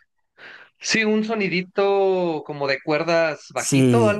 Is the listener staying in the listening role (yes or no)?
no